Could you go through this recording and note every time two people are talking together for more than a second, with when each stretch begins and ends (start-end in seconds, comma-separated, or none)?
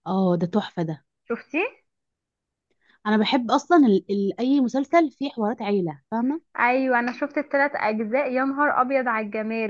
none